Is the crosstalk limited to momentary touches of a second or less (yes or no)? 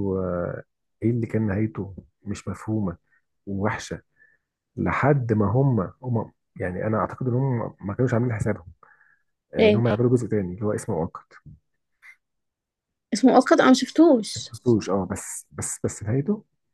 yes